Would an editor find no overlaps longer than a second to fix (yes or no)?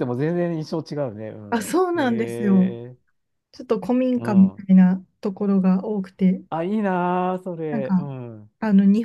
no